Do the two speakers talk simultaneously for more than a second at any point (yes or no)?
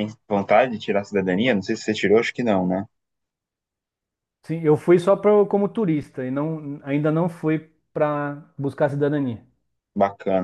no